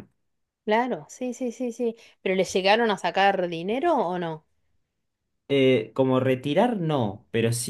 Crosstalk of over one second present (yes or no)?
no